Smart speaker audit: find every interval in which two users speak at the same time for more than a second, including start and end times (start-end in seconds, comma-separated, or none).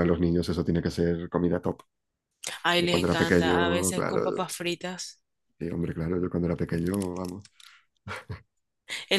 2.8-4.4